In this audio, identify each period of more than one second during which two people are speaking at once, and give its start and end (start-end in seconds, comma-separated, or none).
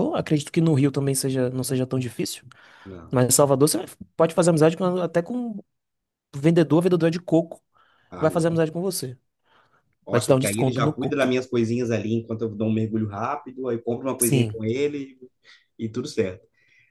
10.1-11.4